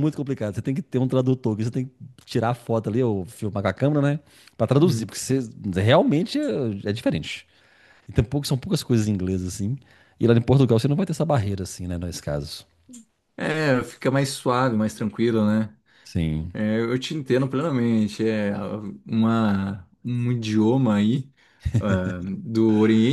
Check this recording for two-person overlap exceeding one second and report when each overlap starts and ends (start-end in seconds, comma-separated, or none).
none